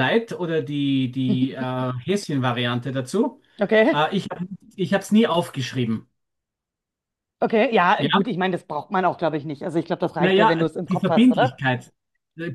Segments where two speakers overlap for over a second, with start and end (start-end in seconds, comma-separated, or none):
10.2-11.6